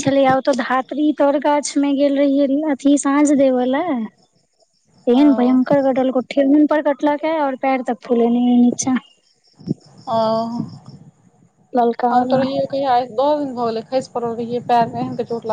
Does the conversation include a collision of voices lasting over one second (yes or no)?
no